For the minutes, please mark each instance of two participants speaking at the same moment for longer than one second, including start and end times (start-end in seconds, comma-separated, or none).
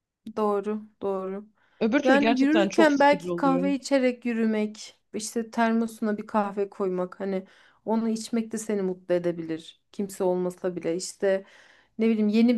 2.0-3.7